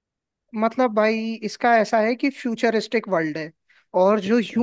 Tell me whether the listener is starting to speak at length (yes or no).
no